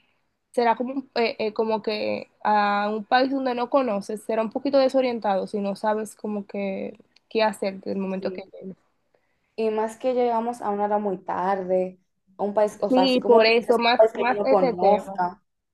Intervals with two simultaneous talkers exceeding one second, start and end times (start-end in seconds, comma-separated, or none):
12.9-15.0